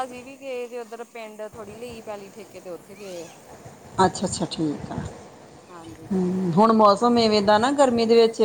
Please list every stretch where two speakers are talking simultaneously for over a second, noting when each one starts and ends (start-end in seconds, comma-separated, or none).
none